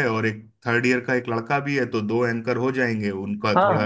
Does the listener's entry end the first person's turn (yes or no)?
yes